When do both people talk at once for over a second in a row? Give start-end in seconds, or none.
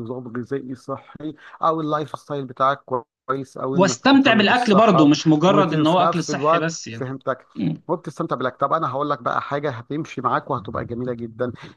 3.7-7.1